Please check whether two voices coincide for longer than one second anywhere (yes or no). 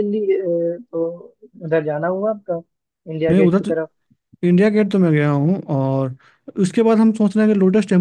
no